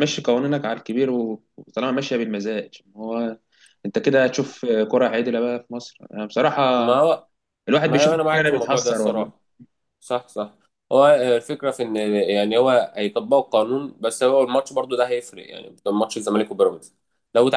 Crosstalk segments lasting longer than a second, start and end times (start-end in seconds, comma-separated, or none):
7.8-9.3